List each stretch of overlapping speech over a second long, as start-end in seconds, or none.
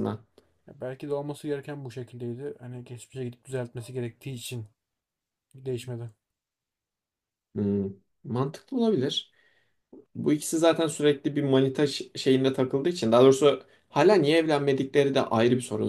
none